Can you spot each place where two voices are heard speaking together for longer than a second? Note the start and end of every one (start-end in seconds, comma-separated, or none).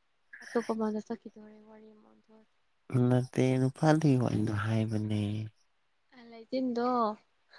none